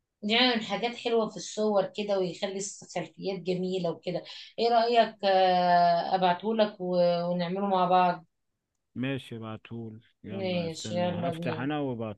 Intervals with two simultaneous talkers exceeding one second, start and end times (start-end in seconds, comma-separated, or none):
10.3-11.7